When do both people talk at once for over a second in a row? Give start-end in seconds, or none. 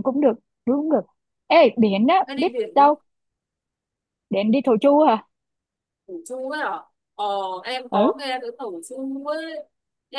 none